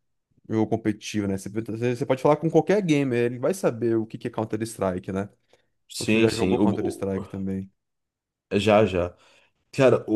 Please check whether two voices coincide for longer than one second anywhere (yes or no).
yes